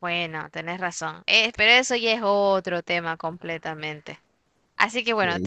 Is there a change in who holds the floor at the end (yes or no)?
no